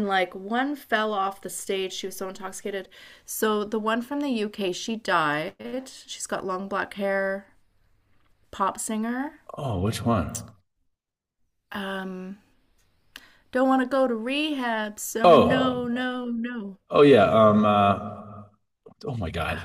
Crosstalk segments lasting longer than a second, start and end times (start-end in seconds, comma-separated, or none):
none